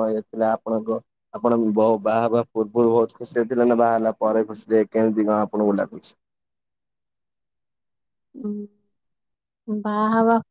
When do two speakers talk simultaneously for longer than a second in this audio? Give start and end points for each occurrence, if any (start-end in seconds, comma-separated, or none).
none